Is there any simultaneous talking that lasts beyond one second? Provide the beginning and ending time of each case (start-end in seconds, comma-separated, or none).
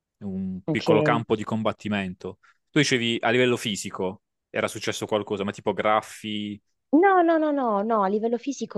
none